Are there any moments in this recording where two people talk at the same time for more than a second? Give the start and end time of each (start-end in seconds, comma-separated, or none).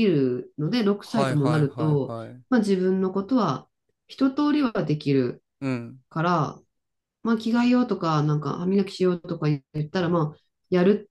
1.0-2.4